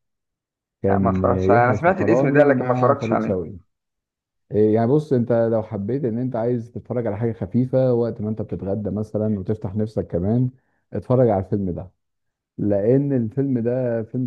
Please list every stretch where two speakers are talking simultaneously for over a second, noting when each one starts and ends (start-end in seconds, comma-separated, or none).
0.9-3.4